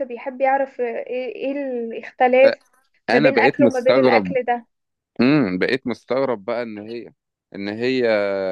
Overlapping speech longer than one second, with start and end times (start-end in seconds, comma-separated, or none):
3.1-4.3